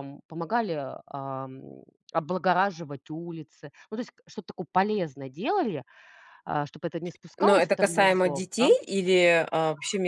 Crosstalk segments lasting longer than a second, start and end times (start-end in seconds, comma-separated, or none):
7.4-8.7